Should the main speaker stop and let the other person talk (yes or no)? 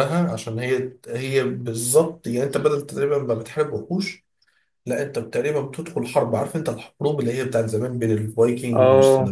no